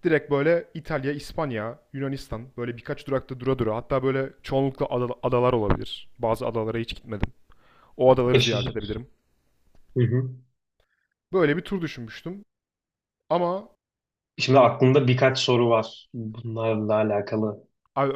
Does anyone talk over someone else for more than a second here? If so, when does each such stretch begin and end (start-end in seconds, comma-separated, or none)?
none